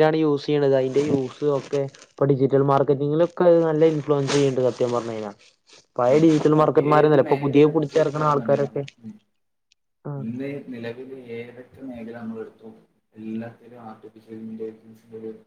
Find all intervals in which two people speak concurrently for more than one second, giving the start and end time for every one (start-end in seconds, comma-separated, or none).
6.9-8.8